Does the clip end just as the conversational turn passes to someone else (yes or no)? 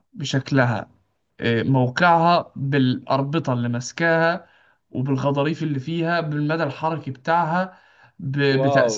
no